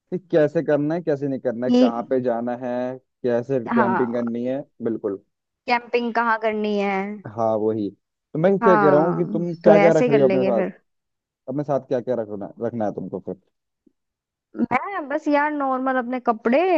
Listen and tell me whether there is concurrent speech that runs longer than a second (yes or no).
yes